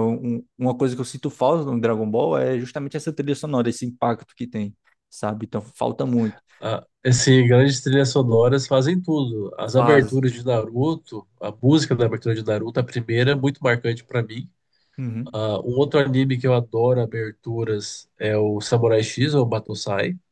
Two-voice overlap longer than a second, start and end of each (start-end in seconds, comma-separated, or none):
none